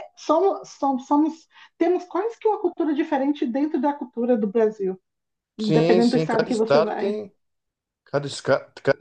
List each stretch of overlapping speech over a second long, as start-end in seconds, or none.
5.6-7.2